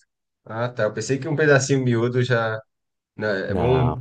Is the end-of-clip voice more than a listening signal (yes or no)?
no